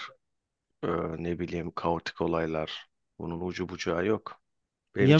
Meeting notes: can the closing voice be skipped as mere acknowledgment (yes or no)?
yes